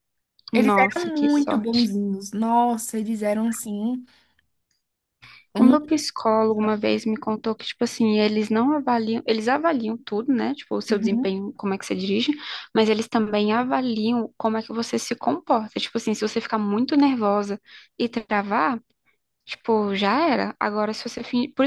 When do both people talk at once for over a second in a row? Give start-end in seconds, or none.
0.5-1.9